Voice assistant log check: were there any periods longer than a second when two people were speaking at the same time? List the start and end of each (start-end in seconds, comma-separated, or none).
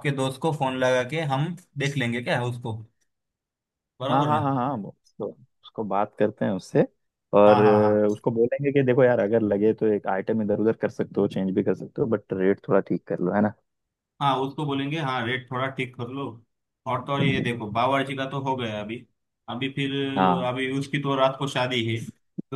none